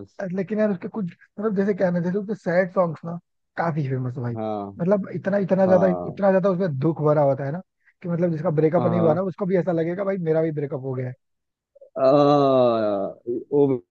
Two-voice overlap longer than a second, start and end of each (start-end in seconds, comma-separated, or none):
none